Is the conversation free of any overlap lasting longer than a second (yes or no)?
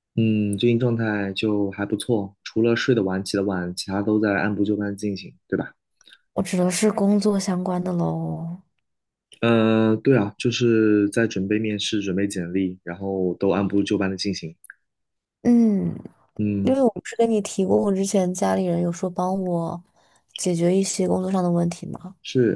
yes